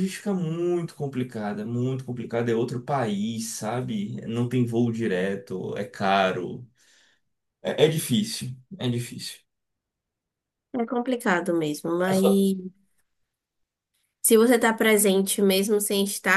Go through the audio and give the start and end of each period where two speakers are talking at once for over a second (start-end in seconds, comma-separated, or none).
none